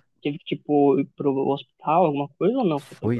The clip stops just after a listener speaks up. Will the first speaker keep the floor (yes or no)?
no